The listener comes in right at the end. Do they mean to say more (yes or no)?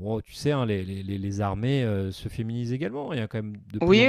yes